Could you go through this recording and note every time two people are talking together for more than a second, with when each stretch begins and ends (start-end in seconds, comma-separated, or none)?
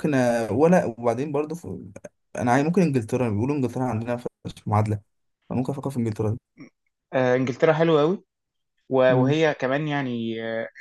none